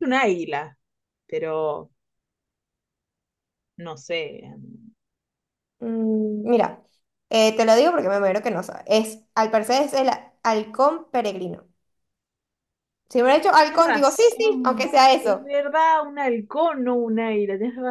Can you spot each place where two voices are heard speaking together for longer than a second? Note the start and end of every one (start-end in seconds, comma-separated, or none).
13.6-15.5